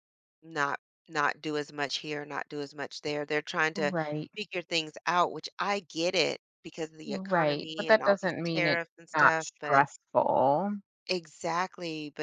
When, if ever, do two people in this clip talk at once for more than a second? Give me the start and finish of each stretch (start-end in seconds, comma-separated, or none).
7.0-9.8